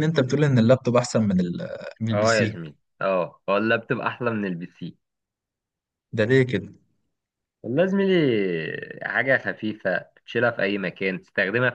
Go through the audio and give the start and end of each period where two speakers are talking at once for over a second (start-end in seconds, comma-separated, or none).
none